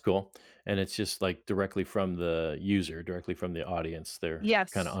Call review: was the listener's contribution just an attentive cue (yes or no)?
no